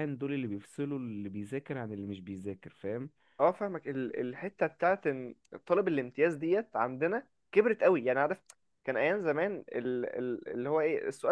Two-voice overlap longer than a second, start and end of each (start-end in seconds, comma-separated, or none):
none